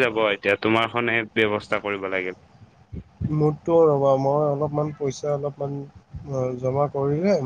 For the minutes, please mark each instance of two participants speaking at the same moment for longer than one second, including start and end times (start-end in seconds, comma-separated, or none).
none